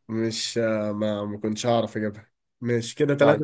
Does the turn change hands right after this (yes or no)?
yes